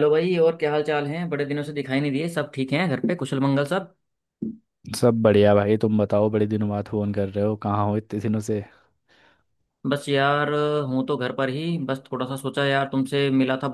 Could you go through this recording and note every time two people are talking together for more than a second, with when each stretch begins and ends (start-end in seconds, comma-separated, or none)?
none